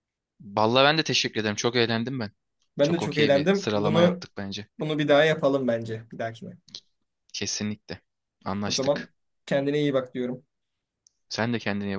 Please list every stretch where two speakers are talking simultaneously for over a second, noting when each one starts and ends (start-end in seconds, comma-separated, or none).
2.8-4.2